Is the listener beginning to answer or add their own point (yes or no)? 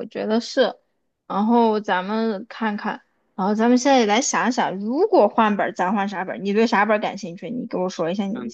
yes